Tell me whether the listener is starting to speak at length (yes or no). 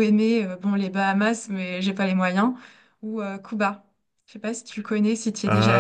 yes